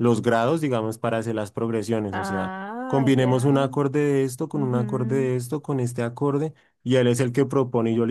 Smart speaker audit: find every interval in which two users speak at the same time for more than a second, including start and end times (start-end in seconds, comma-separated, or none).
2.1-3.8